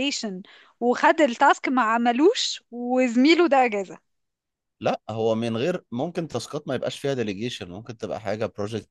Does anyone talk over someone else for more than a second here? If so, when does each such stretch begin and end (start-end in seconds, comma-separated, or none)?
none